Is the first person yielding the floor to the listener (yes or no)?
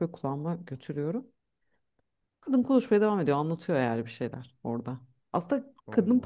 no